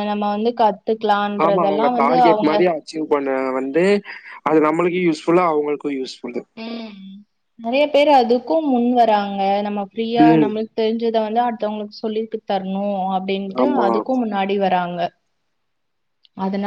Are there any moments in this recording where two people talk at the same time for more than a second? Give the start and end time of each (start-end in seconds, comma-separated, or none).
none